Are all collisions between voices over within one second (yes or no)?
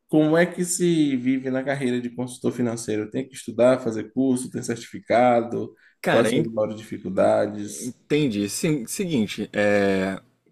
yes